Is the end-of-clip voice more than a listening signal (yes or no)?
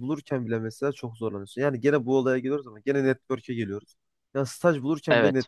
no